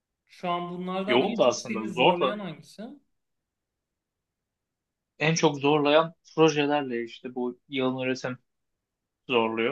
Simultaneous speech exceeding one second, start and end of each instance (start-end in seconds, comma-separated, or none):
1.1-2.4